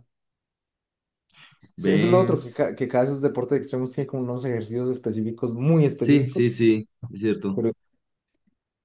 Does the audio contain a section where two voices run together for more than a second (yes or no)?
no